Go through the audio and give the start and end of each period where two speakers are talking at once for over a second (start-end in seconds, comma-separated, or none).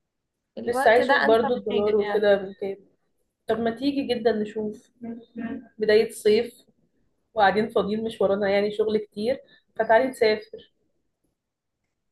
0.7-2.3